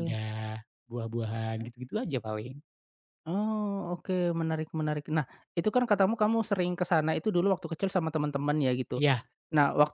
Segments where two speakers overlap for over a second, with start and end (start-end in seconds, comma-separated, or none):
none